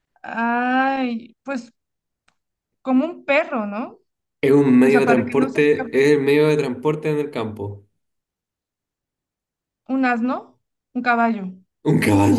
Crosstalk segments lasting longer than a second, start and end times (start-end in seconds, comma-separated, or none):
4.8-6.0